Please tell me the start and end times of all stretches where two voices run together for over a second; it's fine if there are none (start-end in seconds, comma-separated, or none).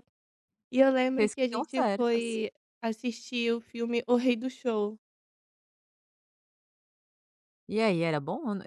1.2-2.4